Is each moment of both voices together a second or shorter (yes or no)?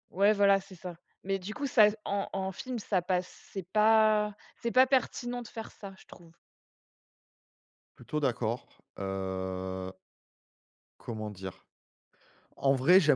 yes